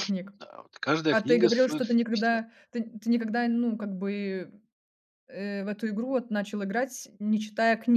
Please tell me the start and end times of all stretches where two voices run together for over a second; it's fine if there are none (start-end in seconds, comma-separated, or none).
1.1-2.4